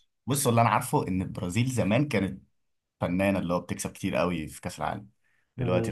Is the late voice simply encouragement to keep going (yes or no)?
no